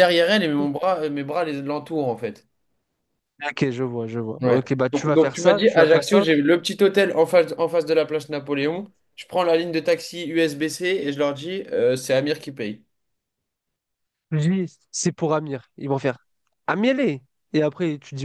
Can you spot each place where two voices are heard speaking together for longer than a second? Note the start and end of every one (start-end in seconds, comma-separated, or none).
4.4-6.2